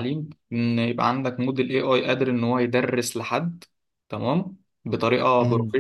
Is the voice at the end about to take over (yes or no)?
no